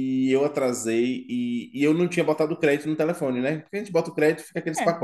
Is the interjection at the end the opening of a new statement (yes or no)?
no